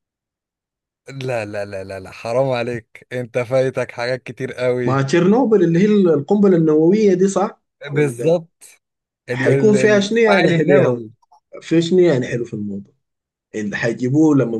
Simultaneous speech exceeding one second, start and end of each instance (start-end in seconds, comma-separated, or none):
9.3-11.1